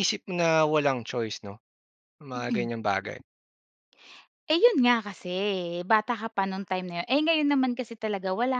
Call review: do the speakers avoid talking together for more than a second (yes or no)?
yes